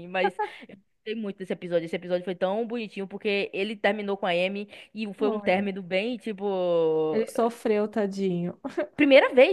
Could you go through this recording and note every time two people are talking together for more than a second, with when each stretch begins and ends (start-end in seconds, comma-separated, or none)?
none